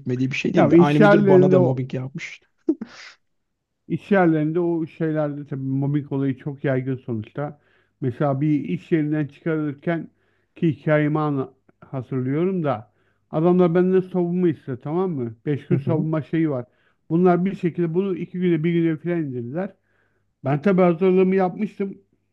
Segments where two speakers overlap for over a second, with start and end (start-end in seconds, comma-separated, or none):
0.6-1.8